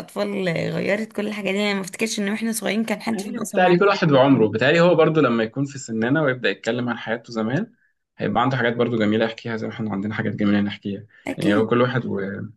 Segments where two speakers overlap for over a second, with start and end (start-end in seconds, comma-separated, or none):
3.1-4.5